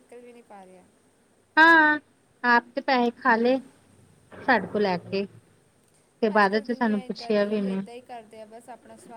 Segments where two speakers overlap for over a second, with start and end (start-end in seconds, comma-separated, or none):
6.3-7.8